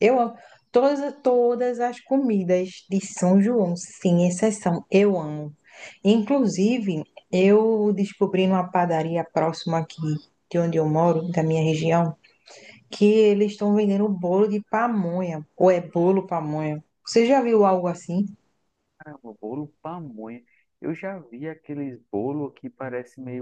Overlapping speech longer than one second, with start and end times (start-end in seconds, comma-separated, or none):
none